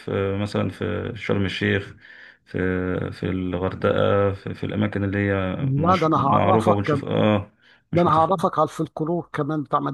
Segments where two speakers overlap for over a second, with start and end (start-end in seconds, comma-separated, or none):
5.6-7.0